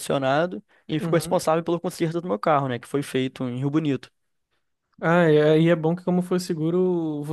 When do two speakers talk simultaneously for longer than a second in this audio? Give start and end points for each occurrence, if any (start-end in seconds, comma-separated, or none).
none